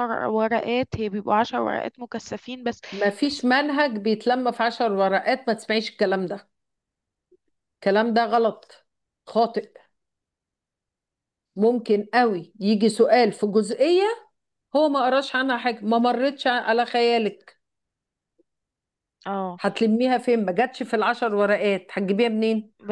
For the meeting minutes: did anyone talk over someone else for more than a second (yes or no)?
no